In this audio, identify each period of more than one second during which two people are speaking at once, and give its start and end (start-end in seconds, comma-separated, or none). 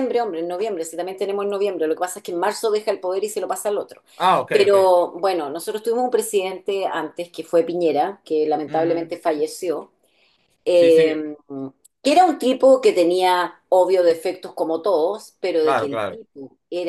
none